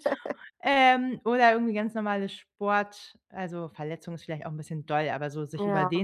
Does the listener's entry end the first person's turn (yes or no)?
no